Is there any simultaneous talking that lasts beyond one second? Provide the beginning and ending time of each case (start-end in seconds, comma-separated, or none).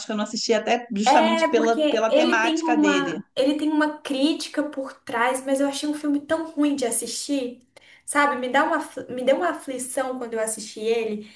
1.1-3.2